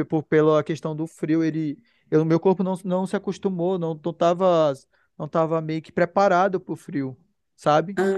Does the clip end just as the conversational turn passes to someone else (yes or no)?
no